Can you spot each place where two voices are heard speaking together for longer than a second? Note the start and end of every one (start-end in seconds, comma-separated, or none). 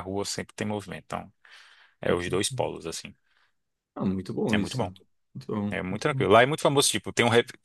none